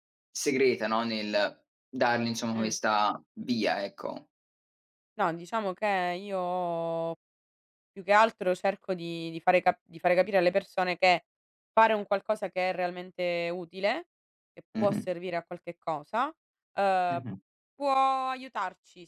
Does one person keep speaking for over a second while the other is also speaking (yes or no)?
no